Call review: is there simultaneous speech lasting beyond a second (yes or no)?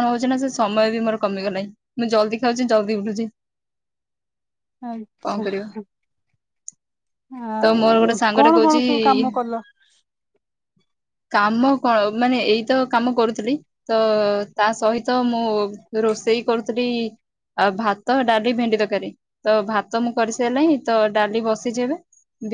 yes